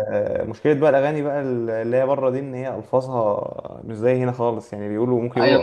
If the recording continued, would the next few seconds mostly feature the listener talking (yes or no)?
yes